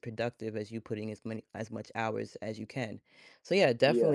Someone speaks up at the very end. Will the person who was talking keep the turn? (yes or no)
yes